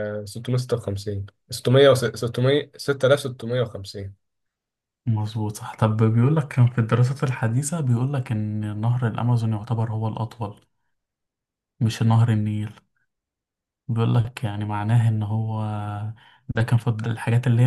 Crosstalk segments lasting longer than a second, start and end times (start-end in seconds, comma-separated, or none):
none